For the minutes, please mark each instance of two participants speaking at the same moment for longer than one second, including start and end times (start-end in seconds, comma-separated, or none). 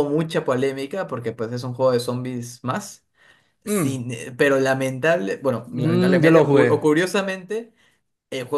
5.7-6.9